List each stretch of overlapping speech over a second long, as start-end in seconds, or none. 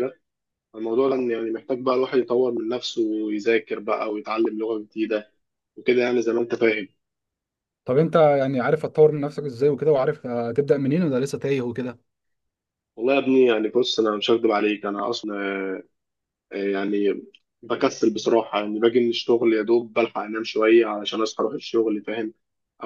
none